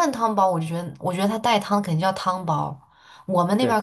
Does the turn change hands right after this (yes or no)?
no